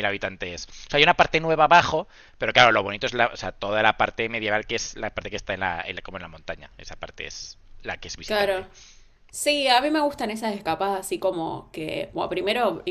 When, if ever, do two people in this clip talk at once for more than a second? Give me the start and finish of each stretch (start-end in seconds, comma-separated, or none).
none